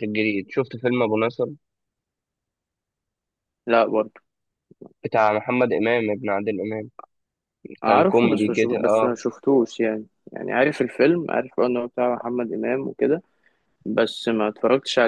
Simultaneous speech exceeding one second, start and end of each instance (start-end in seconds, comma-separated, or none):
7.8-9.2